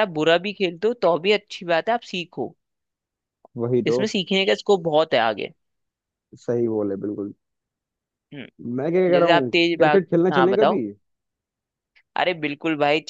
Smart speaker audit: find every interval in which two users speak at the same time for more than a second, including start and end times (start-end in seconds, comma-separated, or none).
9.1-10.8